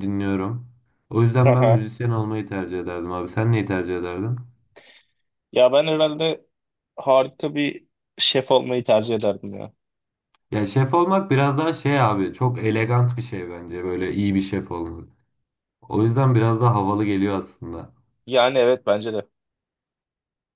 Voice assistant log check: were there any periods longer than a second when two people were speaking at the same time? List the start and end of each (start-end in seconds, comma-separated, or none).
none